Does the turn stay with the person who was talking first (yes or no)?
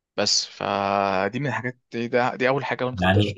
no